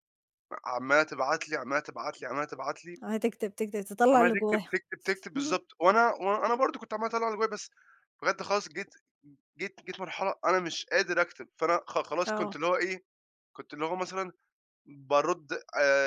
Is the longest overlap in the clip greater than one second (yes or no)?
no